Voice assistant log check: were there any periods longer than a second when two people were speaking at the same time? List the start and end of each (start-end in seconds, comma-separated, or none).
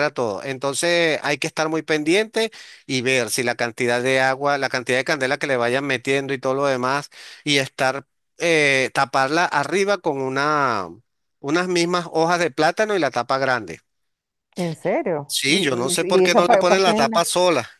15.3-17.1